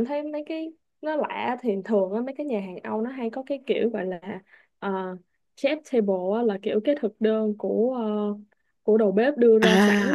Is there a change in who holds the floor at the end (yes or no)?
no